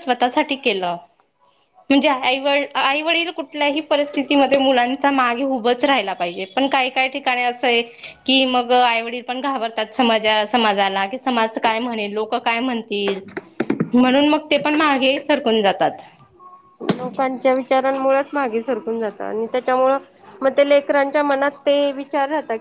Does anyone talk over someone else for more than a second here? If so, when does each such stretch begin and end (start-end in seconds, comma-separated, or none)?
none